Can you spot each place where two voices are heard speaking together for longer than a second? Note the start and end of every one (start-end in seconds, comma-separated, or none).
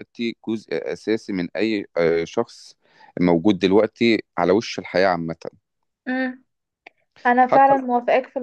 none